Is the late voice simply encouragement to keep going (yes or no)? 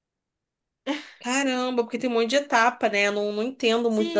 no